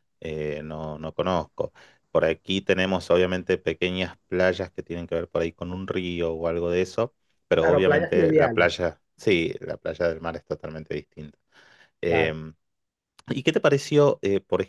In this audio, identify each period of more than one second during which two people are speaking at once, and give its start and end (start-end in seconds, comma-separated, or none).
7.6-8.8